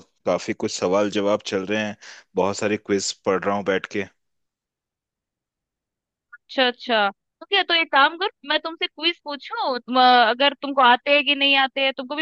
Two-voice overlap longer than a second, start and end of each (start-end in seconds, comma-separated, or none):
none